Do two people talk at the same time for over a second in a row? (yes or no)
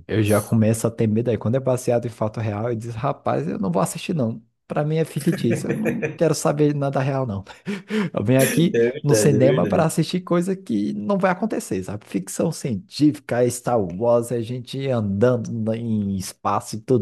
yes